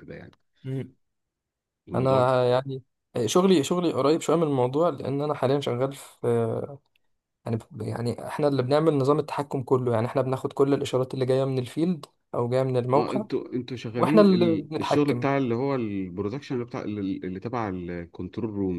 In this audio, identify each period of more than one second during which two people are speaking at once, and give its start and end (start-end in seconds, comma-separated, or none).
14.0-15.3